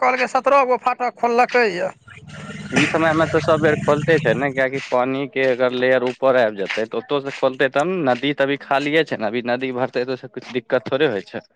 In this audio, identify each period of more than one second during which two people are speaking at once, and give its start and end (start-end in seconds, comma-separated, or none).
none